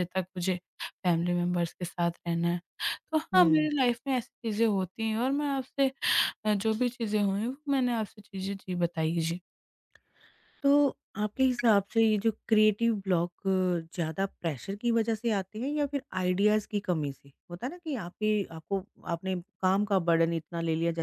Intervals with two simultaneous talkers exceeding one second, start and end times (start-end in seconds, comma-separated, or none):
none